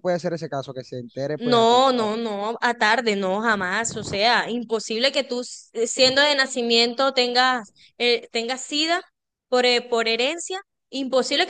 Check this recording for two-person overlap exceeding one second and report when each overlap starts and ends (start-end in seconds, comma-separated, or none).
none